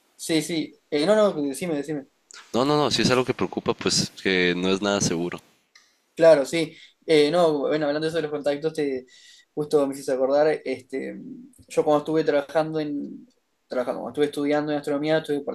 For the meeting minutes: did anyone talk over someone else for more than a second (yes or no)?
no